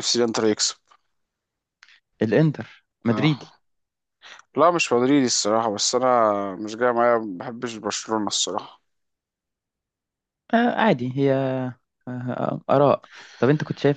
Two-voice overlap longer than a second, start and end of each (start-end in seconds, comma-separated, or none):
none